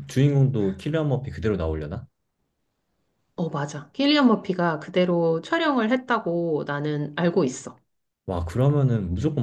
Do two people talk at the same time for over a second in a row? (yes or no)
no